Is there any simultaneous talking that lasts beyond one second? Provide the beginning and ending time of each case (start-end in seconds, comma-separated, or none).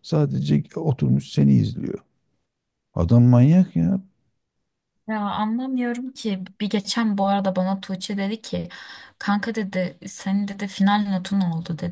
none